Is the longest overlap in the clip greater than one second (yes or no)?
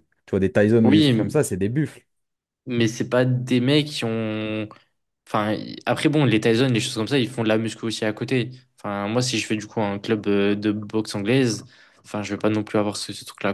no